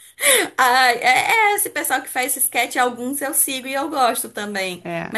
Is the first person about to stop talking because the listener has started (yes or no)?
no